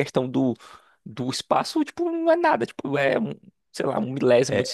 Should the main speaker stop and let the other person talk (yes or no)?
yes